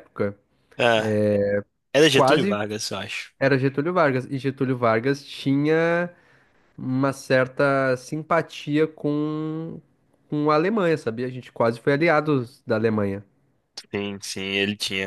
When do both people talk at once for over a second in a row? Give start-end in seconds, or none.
none